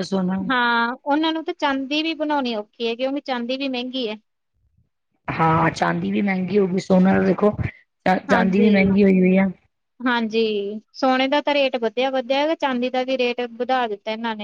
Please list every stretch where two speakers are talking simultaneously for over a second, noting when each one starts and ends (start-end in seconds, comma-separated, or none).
none